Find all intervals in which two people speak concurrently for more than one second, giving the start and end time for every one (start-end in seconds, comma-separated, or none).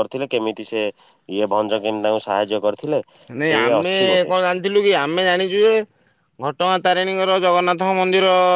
none